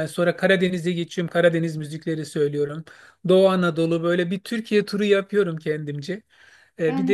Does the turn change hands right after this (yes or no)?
no